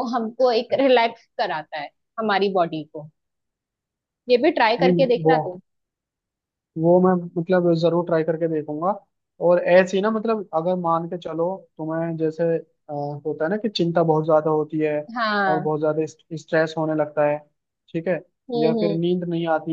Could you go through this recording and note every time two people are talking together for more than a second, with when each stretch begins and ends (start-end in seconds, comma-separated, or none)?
none